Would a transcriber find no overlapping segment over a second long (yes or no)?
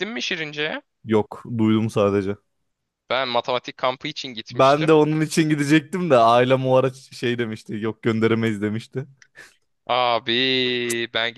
yes